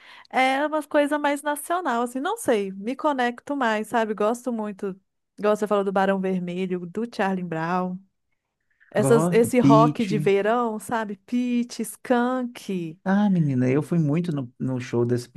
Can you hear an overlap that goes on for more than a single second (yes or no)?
yes